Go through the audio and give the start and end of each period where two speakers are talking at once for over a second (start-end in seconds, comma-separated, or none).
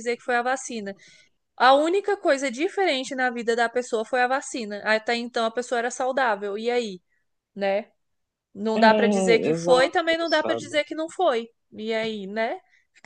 8.7-10.8